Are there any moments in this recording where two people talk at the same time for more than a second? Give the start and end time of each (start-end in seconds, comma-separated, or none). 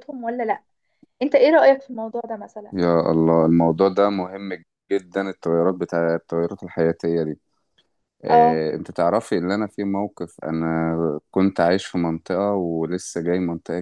none